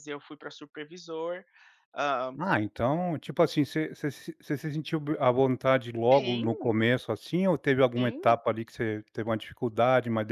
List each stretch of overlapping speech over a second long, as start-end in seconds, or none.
none